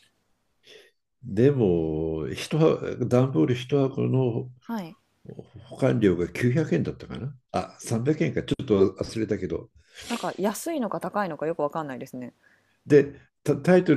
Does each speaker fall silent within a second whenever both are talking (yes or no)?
yes